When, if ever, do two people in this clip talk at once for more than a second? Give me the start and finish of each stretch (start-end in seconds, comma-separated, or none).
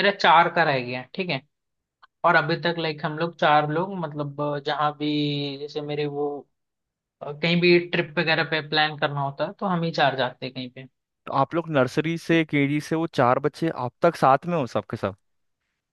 none